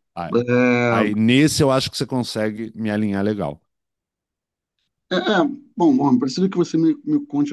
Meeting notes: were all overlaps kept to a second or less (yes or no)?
yes